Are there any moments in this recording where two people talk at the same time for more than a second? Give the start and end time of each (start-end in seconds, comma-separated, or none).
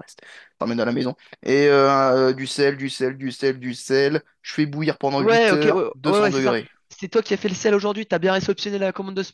5.2-6.7